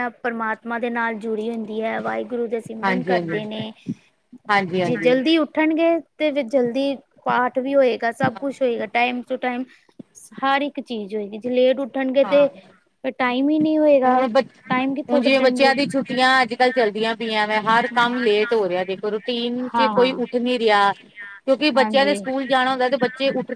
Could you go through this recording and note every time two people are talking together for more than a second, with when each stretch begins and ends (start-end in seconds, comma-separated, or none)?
none